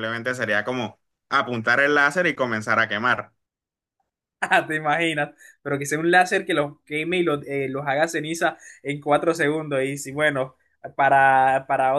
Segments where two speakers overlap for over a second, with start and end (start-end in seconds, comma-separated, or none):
none